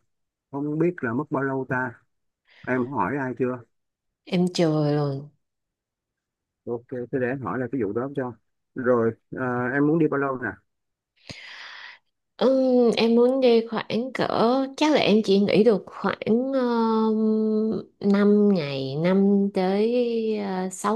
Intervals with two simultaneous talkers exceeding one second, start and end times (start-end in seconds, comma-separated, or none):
none